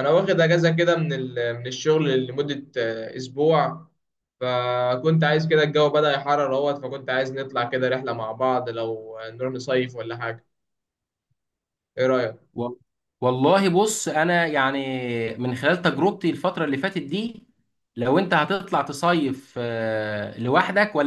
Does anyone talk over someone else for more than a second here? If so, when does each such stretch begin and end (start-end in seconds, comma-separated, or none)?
none